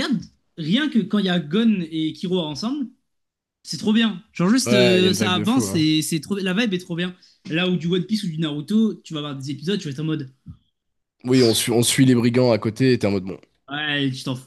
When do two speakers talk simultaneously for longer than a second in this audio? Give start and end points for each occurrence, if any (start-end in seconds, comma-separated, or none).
4.7-5.9